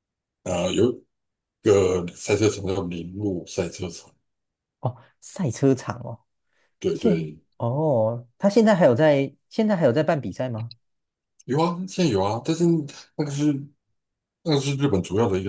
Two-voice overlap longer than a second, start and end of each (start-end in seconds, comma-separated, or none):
none